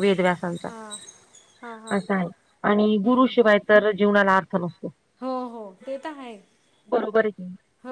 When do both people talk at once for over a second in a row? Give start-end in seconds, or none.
none